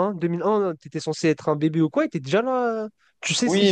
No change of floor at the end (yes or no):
no